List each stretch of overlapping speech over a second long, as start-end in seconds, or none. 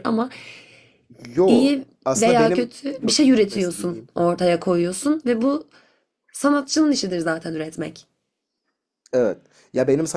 1.5-4.1